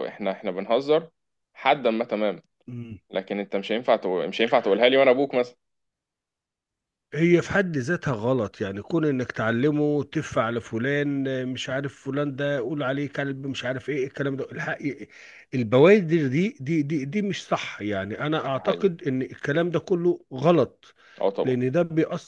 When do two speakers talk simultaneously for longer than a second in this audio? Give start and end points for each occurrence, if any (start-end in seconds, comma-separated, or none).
none